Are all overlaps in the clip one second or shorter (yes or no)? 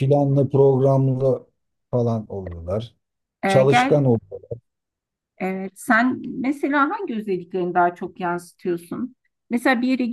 yes